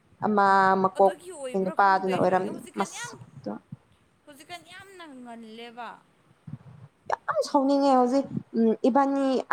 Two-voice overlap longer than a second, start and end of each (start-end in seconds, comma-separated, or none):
1.0-2.3